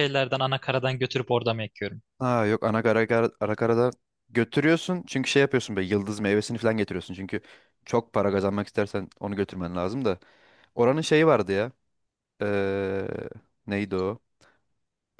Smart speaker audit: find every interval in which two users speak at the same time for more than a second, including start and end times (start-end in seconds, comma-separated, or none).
none